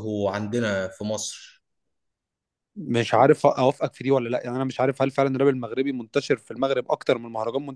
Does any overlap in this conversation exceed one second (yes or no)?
no